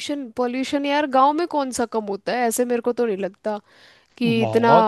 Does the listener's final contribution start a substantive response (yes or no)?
yes